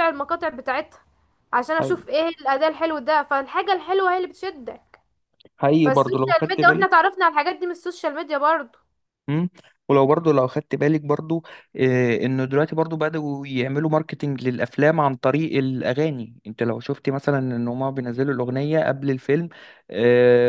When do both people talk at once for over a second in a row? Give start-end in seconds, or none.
5.8-7.0